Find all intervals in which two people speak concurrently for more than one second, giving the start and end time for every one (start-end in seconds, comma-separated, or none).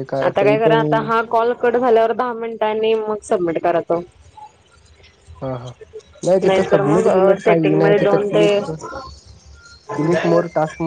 6.2-8.8